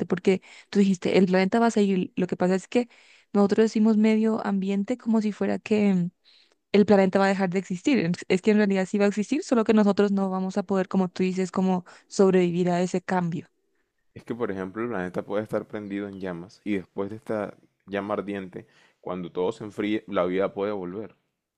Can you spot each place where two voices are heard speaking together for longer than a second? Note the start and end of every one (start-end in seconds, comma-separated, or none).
none